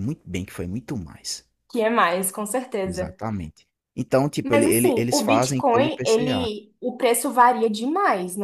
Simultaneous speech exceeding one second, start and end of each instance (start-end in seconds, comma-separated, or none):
4.4-6.5